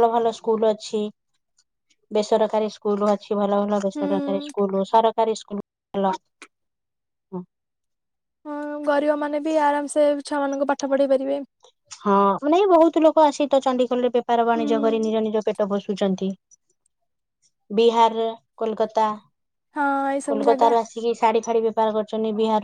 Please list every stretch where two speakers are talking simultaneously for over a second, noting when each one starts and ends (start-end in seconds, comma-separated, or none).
none